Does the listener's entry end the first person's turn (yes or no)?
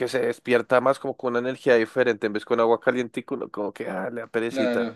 yes